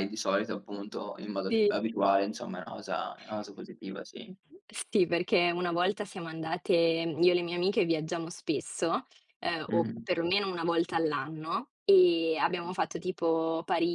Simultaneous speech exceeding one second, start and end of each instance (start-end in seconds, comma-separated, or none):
none